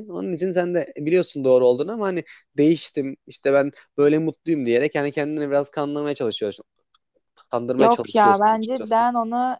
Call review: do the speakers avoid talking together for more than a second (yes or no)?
no